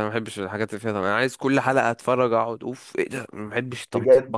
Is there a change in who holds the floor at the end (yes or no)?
yes